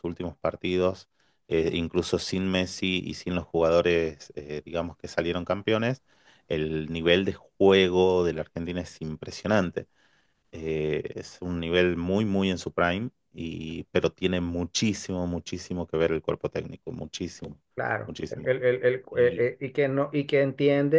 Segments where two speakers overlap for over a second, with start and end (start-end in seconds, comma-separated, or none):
none